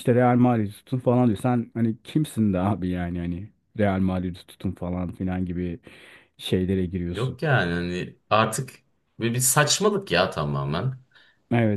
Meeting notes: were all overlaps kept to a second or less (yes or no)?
yes